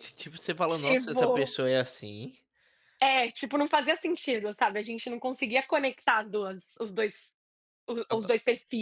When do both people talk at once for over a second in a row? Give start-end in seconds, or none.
none